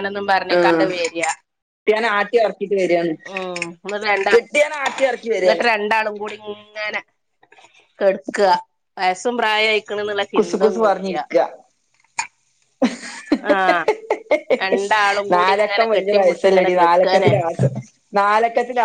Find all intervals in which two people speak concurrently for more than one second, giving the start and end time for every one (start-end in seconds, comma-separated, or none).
15.3-17.3